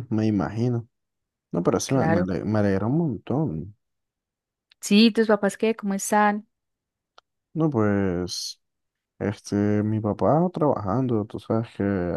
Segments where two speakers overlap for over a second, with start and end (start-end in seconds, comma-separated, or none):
none